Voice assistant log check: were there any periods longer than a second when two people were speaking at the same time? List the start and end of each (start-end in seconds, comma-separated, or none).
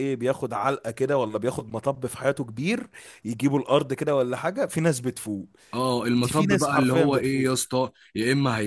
6.1-7.5